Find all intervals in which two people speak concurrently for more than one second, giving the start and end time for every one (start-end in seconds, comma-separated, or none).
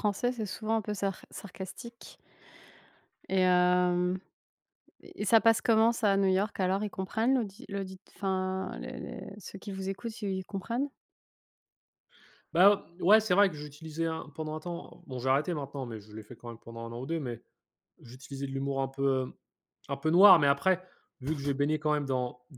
none